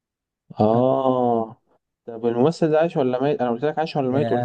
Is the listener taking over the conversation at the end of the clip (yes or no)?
yes